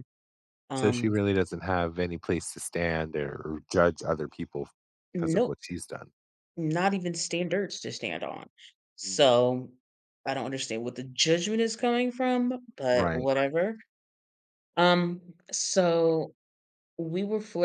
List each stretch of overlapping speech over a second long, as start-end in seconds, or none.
none